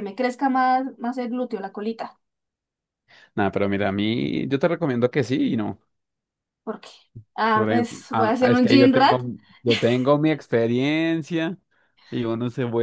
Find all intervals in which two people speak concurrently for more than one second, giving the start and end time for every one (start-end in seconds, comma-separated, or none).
7.5-9.2